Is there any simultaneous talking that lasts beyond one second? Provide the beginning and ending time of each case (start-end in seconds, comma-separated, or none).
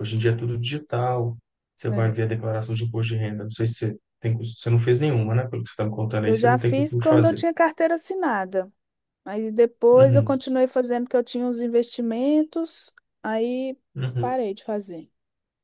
6.2-7.4